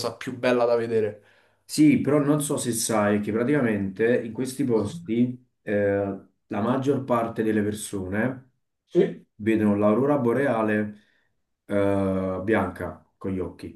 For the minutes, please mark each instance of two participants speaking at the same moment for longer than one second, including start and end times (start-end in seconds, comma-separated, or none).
none